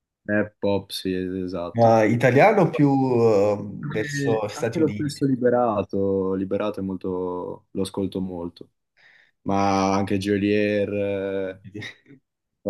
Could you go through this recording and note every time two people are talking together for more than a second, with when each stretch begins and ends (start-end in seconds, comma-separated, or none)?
3.8-5.2